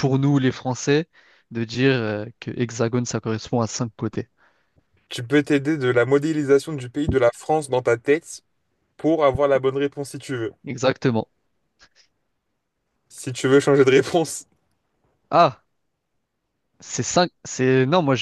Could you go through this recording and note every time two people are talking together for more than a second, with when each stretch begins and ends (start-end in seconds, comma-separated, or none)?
none